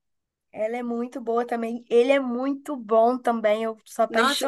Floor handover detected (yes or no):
yes